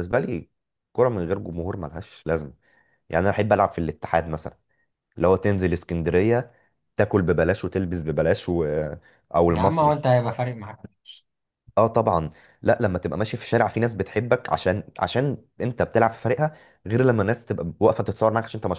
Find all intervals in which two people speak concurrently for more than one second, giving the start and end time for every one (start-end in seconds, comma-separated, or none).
none